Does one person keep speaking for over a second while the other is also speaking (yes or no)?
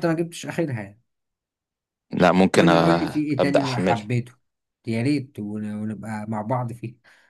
yes